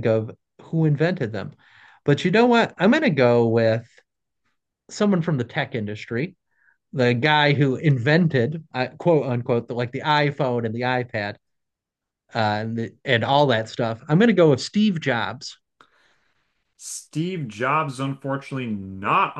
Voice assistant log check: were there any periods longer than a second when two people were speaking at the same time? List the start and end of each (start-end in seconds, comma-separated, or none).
none